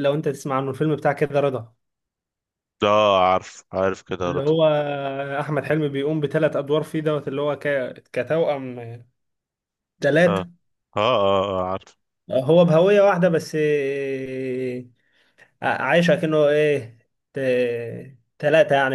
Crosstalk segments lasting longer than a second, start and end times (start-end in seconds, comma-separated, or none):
none